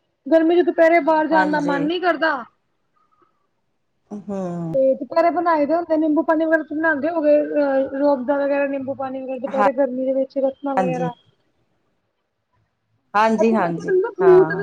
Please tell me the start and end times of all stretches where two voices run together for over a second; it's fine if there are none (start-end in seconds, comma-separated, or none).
none